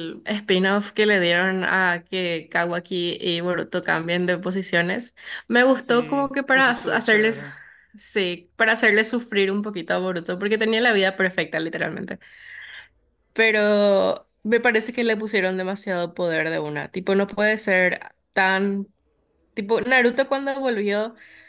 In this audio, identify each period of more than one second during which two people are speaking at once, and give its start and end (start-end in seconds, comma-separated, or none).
5.7-7.4